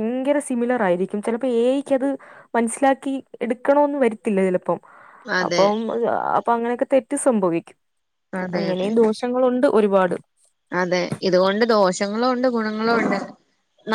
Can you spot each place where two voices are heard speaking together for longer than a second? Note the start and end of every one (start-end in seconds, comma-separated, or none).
none